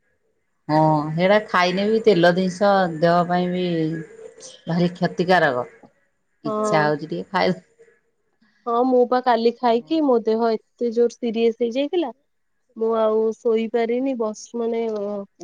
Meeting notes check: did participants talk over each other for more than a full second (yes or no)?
no